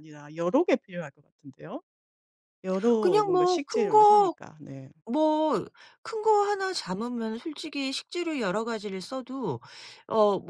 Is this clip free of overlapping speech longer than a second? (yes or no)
no